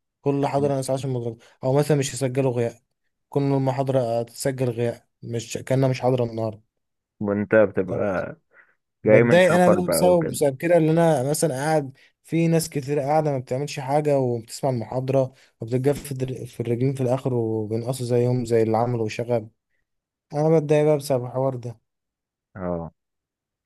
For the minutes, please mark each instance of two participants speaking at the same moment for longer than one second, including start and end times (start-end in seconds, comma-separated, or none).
9.1-10.4